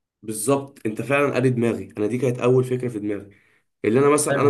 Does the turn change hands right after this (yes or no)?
no